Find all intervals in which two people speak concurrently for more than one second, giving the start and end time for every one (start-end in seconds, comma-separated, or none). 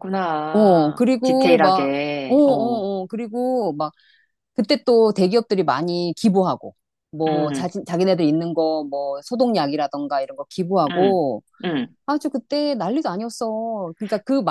0.5-2.8